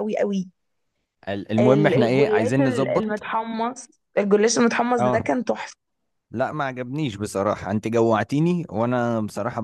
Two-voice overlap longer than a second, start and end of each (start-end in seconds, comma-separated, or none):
1.6-3.2